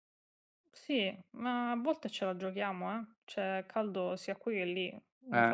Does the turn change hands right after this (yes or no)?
no